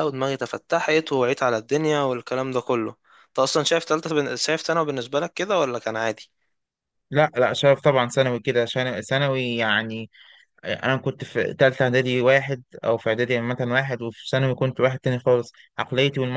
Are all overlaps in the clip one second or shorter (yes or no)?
yes